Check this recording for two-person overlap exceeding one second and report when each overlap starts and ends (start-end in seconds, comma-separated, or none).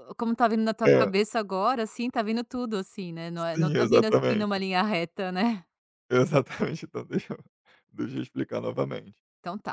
3.3-4.7